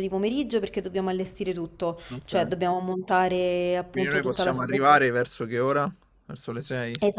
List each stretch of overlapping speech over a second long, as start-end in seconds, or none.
3.9-5.1